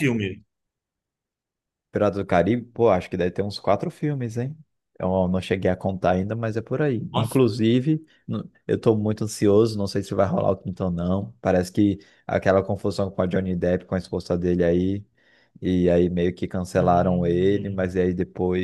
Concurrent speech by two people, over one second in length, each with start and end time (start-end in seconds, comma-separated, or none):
16.8-18.0